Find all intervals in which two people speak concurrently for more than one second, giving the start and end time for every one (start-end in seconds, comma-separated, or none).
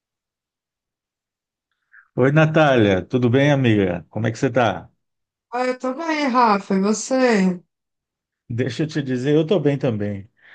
none